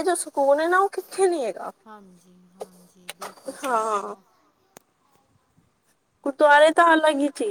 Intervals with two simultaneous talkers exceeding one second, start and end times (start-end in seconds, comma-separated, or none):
none